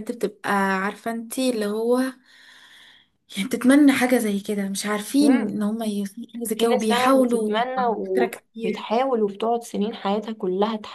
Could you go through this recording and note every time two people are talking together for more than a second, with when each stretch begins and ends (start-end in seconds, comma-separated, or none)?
6.5-8.9